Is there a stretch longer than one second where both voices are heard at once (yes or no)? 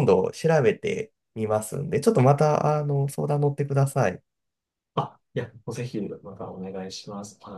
no